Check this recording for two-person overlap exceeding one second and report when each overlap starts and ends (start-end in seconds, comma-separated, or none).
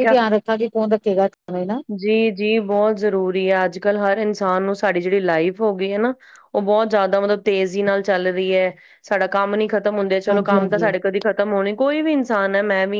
none